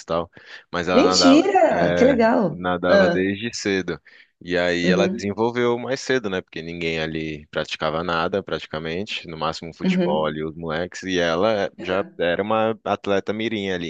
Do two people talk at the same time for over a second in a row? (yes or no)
yes